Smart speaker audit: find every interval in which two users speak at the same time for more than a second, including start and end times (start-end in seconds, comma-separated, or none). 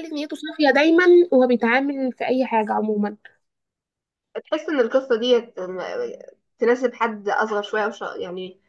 none